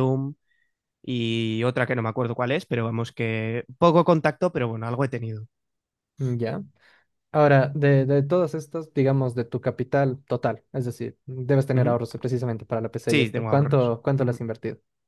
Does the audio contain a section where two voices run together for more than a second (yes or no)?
yes